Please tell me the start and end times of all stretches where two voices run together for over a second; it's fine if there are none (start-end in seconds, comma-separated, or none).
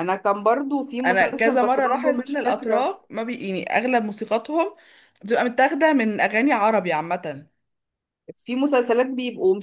1.1-2.9